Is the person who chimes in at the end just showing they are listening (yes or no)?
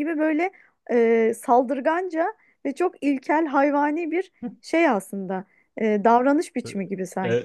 no